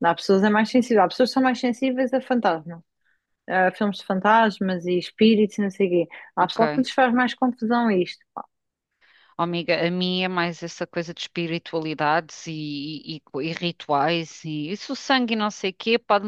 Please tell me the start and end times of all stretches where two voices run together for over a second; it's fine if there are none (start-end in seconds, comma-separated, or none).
none